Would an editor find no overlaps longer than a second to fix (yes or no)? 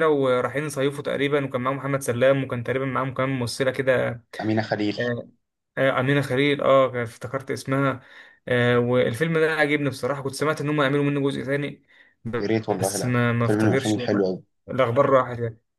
no